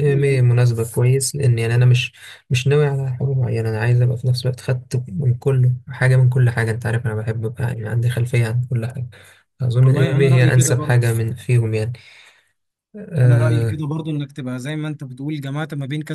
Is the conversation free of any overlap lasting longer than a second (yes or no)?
no